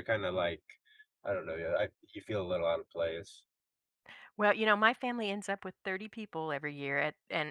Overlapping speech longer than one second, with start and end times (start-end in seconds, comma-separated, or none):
none